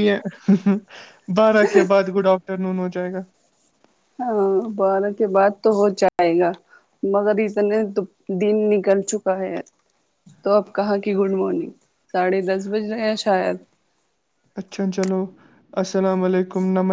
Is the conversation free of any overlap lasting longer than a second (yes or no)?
yes